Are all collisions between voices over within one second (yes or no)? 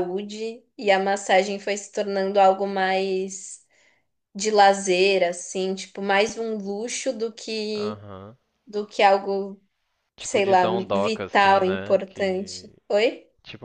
no